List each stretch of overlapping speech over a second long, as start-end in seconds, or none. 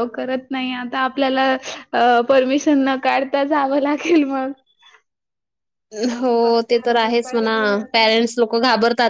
6.2-7.6